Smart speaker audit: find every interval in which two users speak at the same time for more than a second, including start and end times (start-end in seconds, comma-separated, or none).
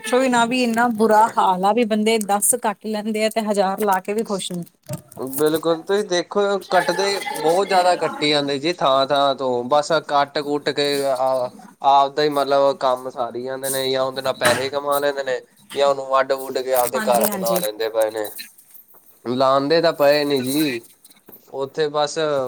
none